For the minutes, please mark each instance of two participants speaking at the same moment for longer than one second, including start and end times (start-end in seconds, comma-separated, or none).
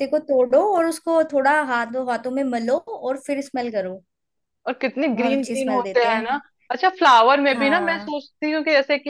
5.1-6.4